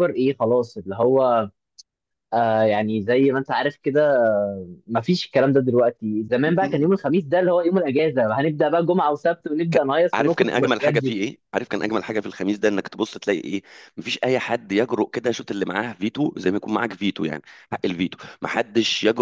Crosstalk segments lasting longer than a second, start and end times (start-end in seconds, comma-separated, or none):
9.7-11.2